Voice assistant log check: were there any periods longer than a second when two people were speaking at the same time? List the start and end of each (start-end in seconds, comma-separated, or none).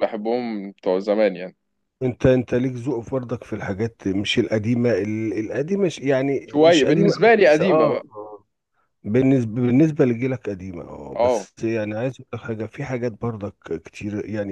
6.5-8.0